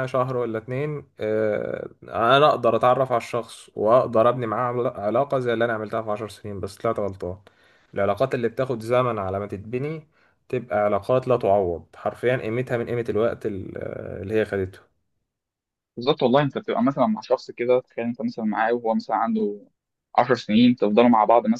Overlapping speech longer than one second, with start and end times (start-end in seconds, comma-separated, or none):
none